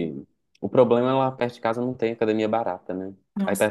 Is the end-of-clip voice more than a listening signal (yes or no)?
yes